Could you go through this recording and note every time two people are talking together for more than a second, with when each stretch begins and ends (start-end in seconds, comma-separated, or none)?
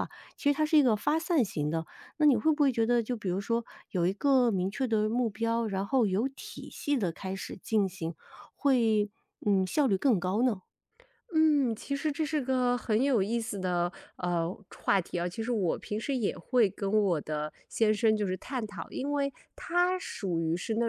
none